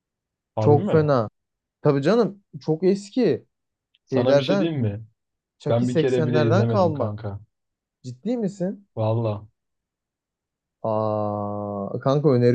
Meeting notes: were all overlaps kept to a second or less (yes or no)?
no